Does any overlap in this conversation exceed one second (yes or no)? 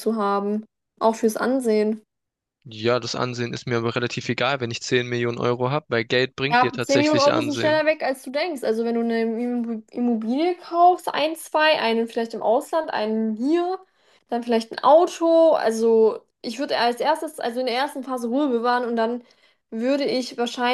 yes